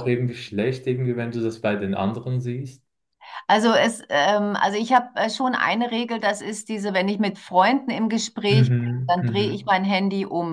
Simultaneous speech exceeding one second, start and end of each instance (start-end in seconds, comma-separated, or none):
8.5-9.7